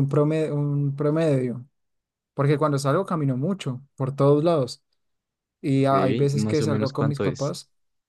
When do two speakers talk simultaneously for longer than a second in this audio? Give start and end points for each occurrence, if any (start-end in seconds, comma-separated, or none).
5.8-7.5